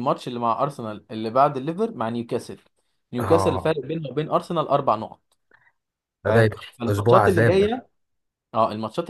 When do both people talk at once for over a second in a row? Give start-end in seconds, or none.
6.2-7.8